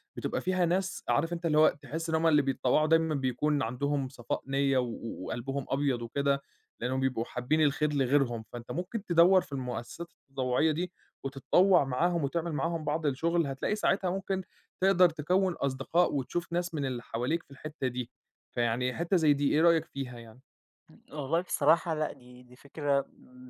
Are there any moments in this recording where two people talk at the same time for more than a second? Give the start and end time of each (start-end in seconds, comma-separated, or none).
none